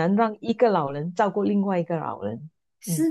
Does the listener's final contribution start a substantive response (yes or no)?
yes